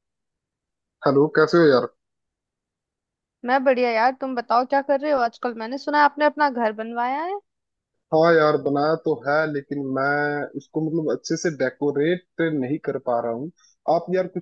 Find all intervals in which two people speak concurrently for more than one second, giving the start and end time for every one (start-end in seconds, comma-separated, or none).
none